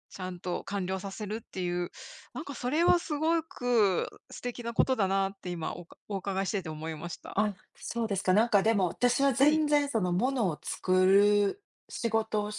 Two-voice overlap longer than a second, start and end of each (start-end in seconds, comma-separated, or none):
none